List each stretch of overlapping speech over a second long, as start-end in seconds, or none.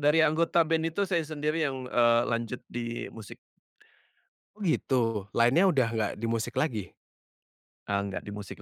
none